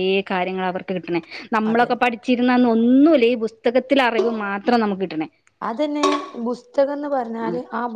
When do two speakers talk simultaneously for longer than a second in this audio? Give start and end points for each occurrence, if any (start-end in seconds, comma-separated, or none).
none